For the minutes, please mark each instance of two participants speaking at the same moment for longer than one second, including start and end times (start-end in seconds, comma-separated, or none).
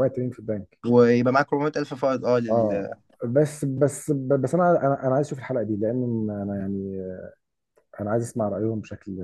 none